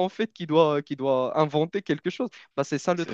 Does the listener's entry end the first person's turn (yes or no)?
yes